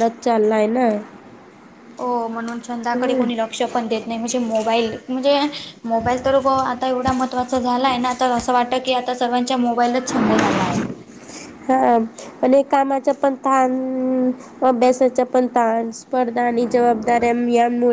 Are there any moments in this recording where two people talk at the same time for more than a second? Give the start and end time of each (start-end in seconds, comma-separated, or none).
none